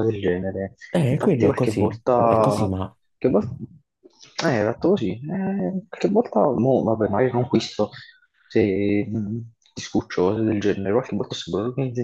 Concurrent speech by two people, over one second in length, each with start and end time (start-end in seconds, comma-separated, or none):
0.9-2.7